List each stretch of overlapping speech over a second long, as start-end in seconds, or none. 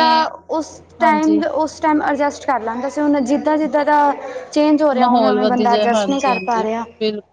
5.0-6.6